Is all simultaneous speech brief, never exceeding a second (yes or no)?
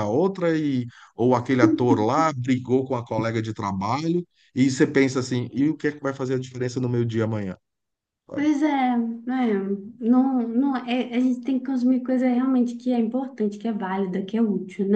yes